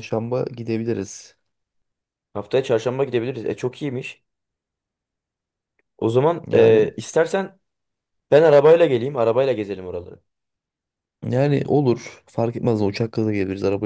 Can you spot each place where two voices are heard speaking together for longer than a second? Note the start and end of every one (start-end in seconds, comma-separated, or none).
none